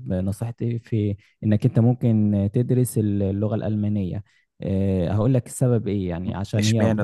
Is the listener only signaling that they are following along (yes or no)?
yes